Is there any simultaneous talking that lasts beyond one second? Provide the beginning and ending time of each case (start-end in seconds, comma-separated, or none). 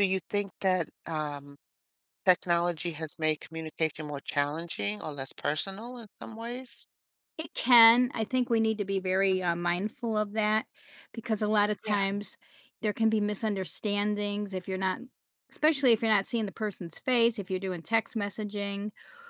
none